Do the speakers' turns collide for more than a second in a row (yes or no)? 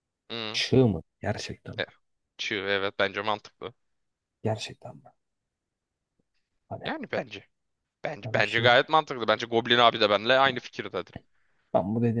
no